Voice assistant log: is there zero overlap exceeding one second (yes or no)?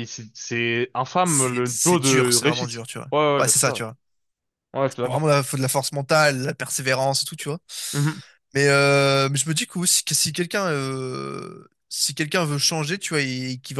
no